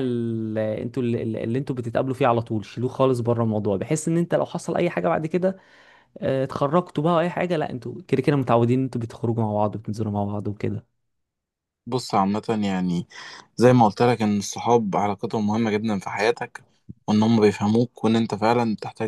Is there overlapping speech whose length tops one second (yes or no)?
no